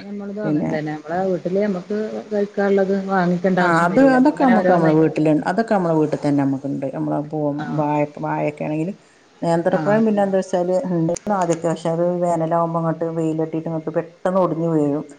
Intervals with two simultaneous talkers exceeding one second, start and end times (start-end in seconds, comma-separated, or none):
none